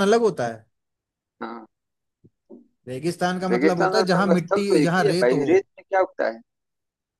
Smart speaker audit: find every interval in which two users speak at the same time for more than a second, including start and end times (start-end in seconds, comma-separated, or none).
3.5-5.5